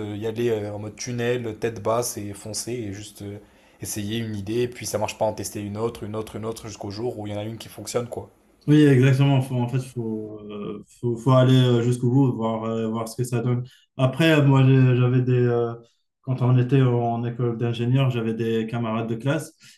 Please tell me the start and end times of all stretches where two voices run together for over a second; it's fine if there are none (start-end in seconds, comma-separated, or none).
none